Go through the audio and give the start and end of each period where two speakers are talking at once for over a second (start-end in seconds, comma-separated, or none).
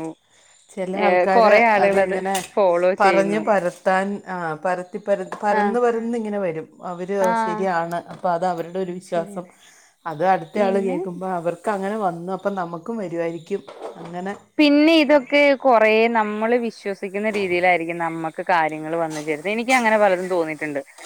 none